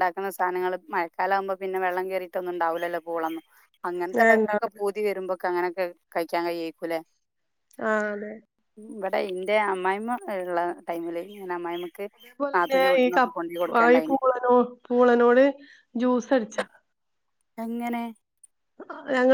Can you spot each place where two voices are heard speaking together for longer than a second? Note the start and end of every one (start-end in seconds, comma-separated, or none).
none